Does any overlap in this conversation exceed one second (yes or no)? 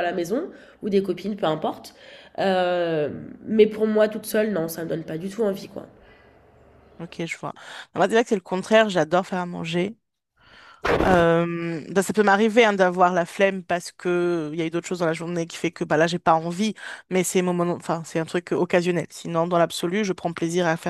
no